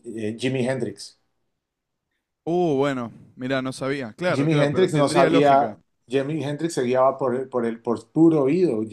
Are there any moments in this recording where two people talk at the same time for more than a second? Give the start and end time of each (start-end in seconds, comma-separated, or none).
4.3-5.8